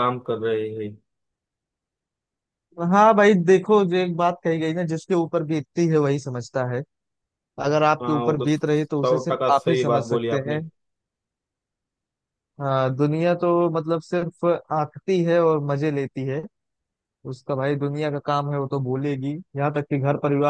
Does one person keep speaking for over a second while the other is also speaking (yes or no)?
yes